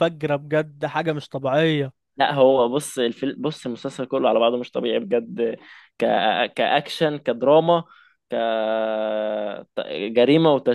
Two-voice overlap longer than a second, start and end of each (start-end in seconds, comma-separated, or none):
none